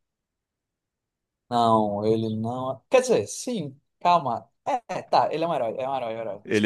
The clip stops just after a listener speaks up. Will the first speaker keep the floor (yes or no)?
no